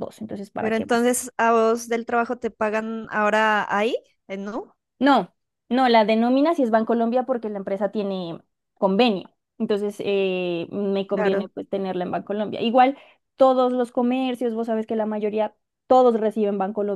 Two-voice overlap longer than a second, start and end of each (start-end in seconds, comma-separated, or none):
none